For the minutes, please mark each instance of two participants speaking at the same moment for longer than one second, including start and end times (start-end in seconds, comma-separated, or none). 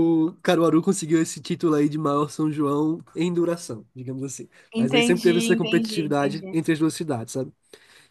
4.7-6.5